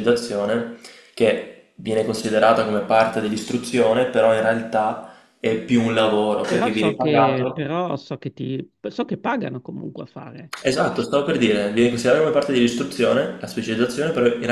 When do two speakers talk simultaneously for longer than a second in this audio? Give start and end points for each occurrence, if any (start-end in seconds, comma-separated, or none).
6.4-7.7